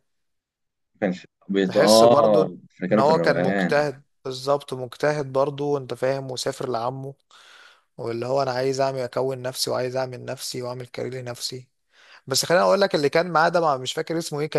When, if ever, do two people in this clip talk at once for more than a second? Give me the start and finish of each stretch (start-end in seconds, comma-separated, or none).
1.7-3.9